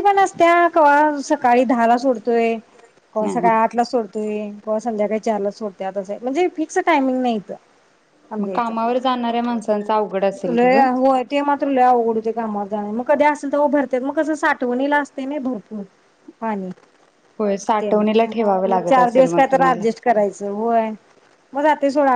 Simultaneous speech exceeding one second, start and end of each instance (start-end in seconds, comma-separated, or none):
17.8-19.8